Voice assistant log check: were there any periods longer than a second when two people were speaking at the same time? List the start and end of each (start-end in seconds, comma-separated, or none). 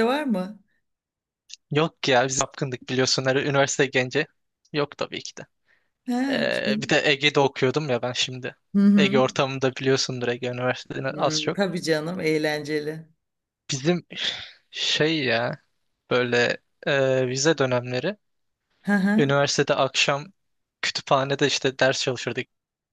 none